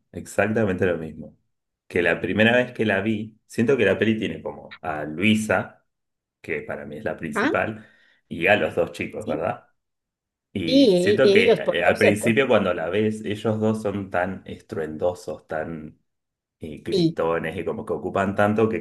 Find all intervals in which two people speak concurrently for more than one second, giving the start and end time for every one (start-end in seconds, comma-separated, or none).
10.7-12.4